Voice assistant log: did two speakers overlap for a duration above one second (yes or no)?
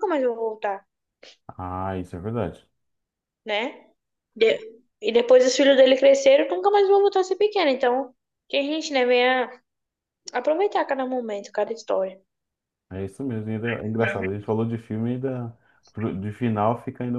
no